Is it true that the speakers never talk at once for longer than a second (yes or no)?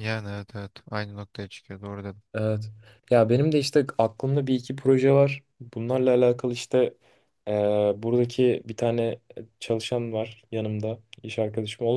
yes